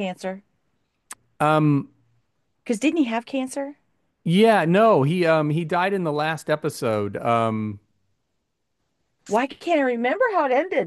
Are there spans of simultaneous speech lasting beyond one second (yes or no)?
no